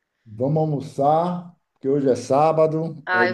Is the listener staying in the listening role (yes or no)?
no